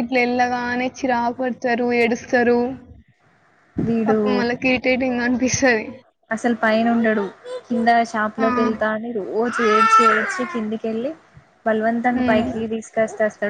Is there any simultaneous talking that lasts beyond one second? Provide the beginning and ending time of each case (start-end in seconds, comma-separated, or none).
none